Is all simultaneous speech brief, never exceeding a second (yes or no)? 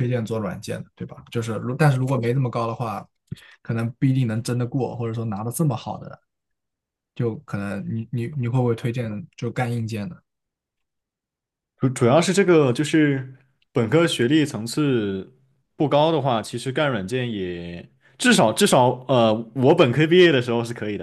yes